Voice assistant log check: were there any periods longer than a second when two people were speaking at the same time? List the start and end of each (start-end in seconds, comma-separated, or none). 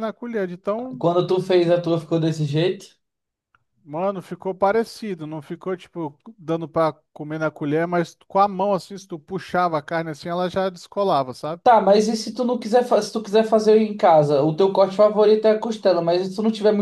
none